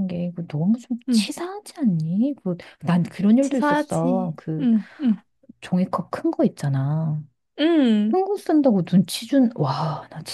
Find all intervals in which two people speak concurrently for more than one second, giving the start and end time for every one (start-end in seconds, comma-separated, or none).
3.4-4.7